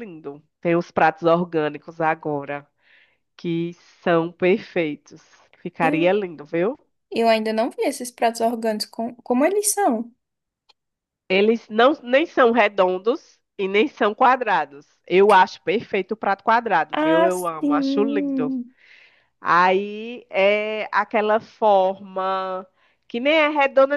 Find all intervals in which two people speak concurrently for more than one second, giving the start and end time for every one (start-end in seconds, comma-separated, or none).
16.9-18.6